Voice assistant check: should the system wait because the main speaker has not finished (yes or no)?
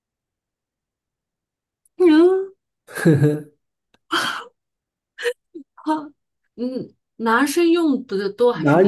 no